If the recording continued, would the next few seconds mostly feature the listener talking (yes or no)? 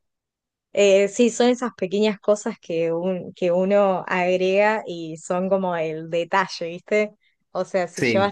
no